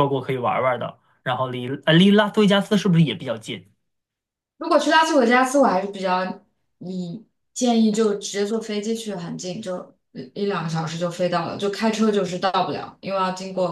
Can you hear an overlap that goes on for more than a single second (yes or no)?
no